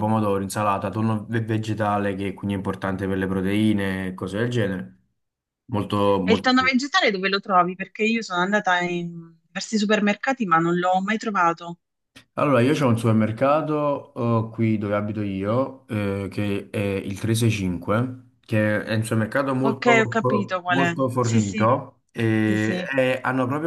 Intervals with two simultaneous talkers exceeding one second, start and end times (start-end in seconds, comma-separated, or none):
19.6-21.7